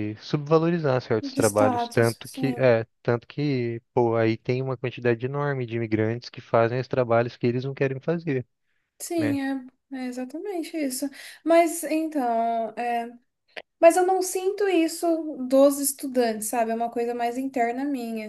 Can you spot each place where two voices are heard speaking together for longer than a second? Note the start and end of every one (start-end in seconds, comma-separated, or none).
1.2-2.7